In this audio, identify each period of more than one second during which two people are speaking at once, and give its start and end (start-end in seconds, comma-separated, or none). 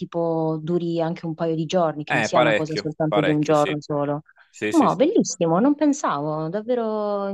2.1-3.8